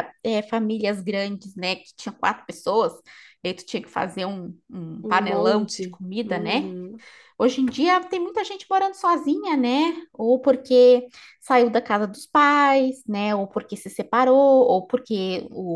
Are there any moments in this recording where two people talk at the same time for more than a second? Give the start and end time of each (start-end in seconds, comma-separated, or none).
5.0-6.7